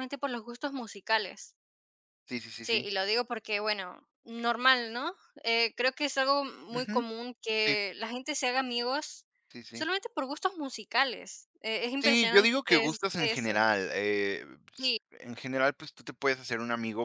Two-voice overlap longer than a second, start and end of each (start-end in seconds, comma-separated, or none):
12.0-13.7